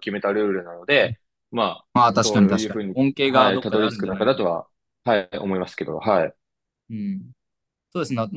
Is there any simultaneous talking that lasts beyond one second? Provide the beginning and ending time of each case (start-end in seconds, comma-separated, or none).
1.9-4.4